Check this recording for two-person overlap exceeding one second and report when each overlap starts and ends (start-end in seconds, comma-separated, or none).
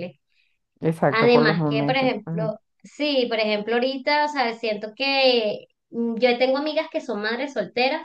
1.1-2.5